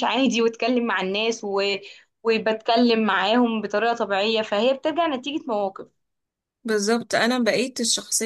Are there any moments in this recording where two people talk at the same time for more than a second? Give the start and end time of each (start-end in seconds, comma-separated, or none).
none